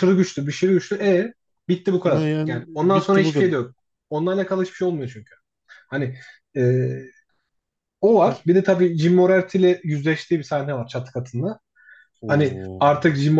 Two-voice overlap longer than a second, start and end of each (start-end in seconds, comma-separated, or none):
2.0-3.5